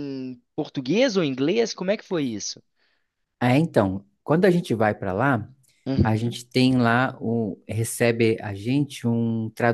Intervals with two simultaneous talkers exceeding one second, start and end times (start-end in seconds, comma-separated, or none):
none